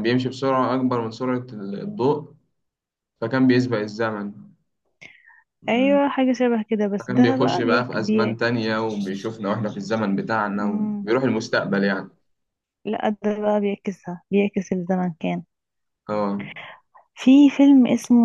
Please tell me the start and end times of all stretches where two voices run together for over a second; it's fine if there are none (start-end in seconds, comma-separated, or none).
7.0-8.5